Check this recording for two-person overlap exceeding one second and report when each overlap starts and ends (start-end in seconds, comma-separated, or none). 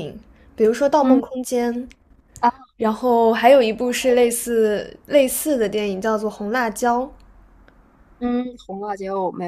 none